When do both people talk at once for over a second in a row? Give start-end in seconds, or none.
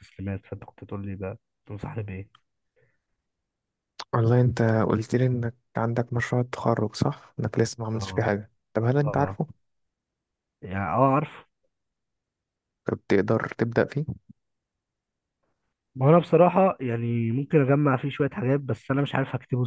none